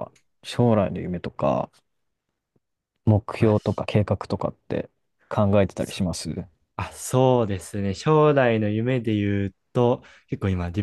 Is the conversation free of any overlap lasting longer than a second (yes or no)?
yes